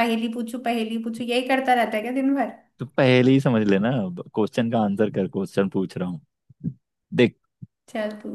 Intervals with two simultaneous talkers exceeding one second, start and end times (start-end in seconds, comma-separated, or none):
none